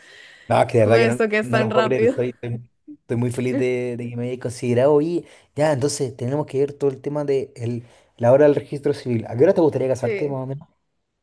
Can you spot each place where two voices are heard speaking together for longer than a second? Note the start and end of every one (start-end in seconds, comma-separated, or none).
0.8-2.2